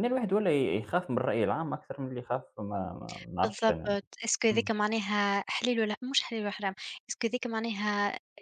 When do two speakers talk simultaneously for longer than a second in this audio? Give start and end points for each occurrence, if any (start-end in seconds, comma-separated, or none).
none